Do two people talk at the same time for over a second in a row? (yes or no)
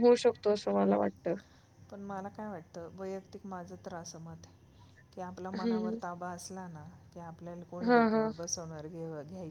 no